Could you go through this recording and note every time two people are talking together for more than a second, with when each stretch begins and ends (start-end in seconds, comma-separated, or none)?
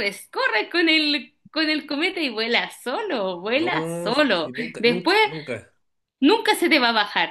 3.5-5.2